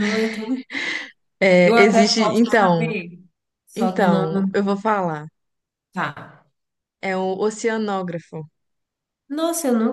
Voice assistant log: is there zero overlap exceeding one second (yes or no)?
no